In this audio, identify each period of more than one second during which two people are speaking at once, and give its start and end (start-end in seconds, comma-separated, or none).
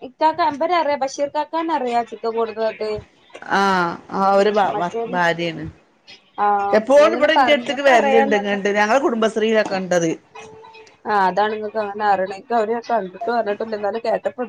6.8-8.5